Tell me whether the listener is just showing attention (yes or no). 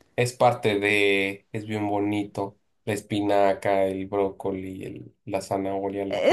no